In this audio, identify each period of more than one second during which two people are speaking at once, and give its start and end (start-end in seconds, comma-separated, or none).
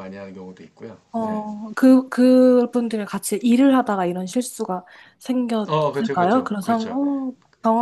5.7-7.0